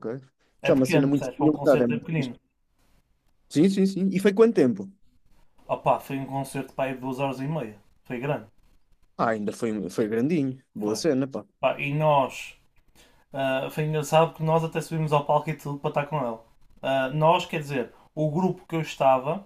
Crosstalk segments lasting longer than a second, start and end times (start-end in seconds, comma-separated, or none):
0.6-2.3